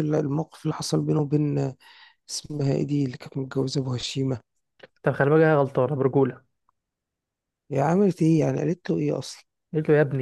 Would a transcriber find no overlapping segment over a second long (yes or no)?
yes